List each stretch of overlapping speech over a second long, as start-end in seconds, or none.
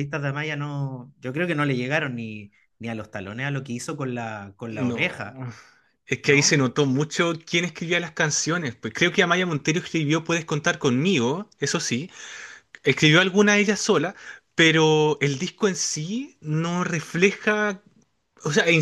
none